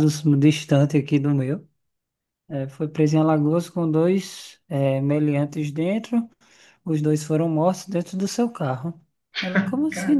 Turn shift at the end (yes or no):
no